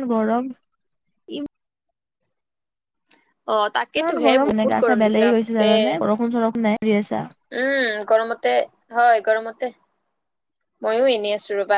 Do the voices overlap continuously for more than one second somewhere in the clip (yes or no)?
yes